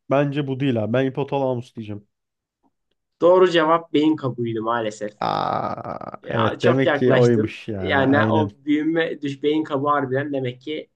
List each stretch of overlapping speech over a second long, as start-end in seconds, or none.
6.2-8.5